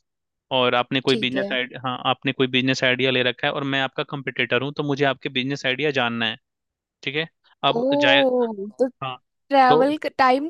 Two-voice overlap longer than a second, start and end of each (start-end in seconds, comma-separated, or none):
none